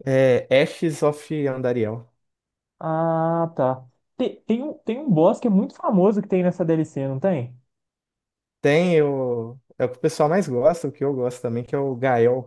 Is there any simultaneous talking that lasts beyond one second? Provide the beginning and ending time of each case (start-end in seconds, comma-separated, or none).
none